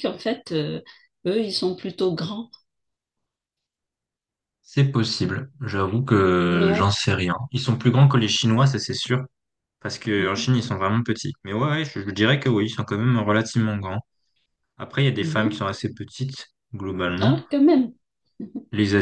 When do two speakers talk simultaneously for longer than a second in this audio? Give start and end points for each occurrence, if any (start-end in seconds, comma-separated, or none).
none